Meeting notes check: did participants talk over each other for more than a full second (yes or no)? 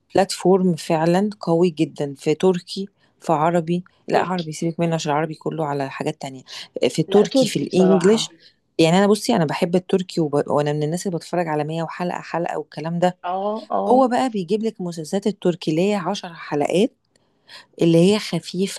yes